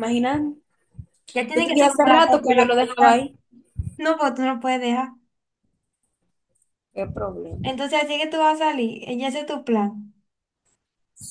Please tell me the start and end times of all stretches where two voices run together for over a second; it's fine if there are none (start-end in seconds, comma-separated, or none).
1.5-3.2